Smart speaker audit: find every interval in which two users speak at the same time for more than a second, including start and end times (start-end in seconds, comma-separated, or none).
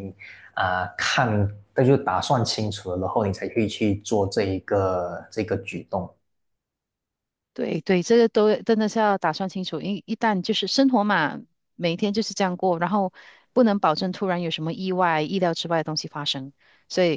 none